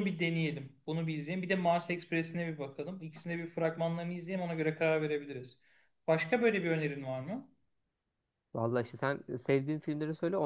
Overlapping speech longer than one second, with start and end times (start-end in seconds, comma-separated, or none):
none